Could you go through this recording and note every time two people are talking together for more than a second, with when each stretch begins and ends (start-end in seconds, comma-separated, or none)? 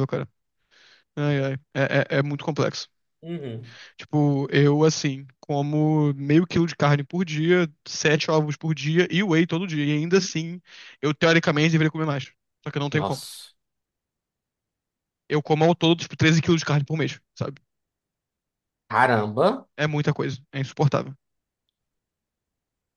none